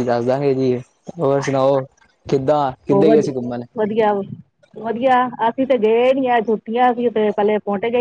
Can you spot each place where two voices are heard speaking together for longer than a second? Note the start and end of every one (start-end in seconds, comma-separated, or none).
none